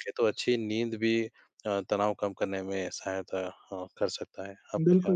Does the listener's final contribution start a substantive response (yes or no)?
yes